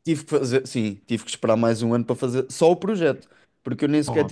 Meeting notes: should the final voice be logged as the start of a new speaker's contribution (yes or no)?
no